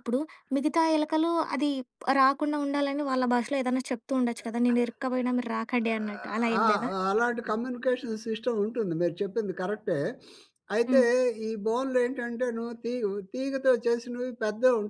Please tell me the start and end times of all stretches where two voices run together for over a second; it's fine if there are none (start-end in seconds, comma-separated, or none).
none